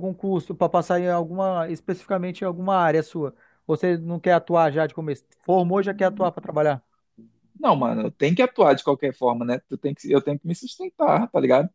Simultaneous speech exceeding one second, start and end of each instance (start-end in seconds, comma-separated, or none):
none